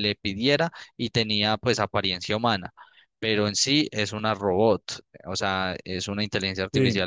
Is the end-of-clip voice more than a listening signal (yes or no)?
no